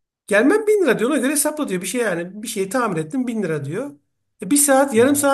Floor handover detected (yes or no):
no